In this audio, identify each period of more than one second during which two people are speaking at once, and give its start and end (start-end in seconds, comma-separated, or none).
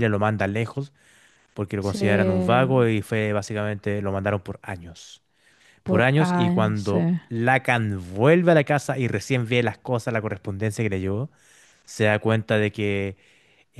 5.8-7.2